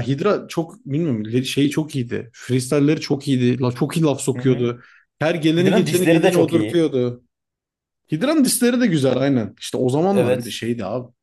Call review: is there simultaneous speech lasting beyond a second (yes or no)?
yes